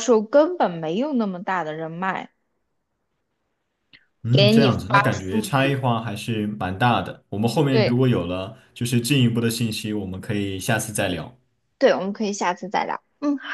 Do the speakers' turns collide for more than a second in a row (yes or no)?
yes